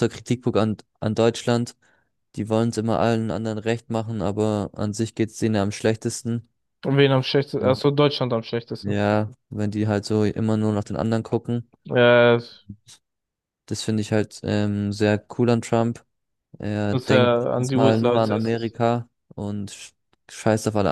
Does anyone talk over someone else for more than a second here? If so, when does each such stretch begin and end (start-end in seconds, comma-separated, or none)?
16.9-18.8